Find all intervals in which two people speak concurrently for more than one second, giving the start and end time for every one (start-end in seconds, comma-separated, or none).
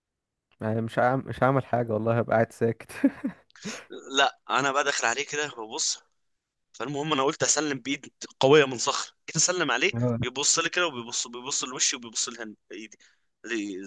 none